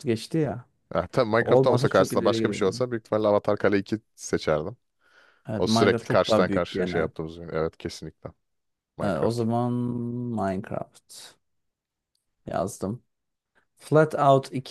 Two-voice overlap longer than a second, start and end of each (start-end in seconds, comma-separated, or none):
1.4-2.8, 5.5-7.1